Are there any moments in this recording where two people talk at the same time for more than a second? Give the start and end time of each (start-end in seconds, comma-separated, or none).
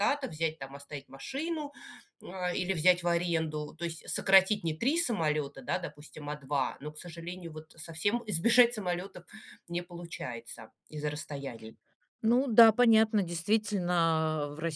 none